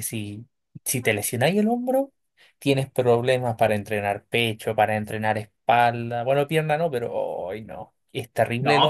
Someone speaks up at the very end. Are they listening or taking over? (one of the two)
taking over